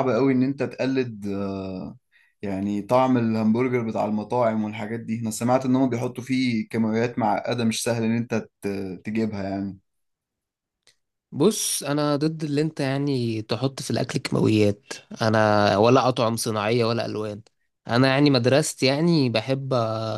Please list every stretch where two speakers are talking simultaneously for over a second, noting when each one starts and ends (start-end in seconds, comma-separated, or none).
none